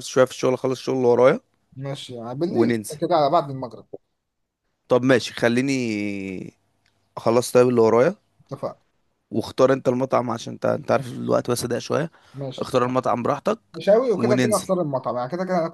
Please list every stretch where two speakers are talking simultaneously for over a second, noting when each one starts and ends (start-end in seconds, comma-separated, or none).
none